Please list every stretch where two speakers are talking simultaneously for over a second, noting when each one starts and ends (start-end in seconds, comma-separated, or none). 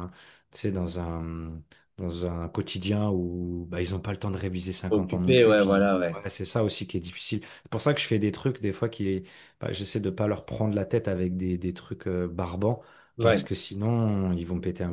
4.9-6.2